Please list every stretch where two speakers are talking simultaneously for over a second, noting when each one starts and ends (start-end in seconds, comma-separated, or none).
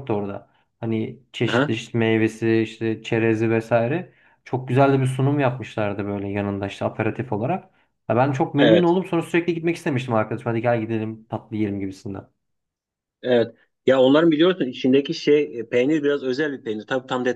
none